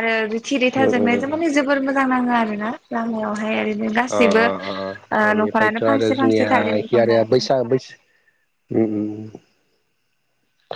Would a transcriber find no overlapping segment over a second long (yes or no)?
no